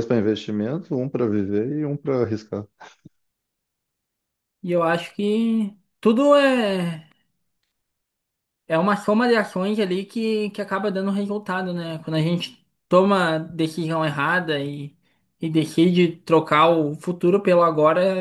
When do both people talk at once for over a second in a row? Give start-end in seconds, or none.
none